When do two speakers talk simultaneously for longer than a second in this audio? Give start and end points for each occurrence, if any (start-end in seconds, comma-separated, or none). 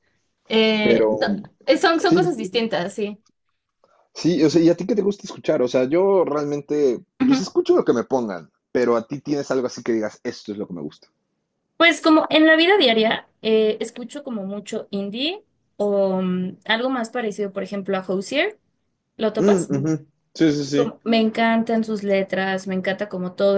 none